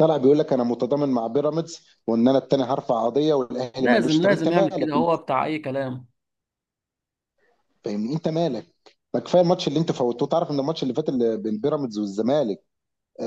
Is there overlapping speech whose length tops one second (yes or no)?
yes